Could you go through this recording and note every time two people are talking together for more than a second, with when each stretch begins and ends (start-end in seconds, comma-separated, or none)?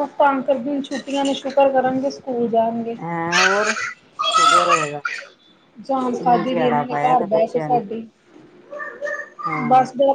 6.2-7.8